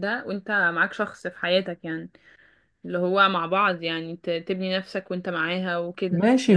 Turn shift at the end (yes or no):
yes